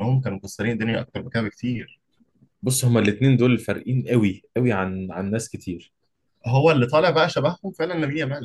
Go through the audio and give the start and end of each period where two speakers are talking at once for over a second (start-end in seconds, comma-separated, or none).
none